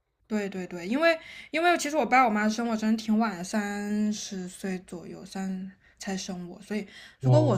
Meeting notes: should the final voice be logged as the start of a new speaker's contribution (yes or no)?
no